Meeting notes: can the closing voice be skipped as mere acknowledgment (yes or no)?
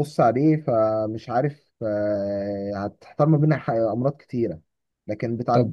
yes